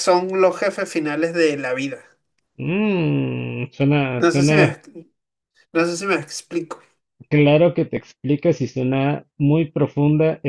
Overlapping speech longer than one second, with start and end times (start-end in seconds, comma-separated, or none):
none